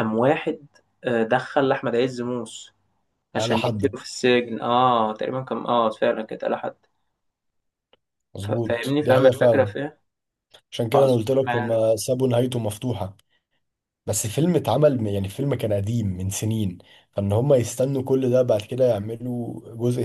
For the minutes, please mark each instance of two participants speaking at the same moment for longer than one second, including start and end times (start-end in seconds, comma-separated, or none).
8.4-9.7